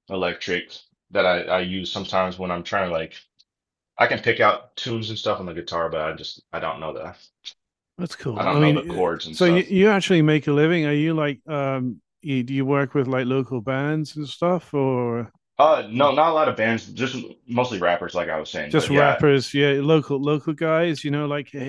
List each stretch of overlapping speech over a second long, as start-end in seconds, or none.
8.4-9.7